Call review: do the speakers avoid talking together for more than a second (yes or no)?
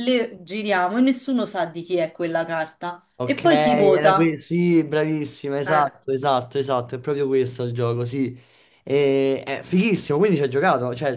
no